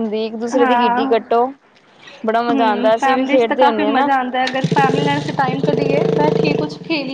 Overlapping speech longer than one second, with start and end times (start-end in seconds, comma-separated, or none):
2.5-4.1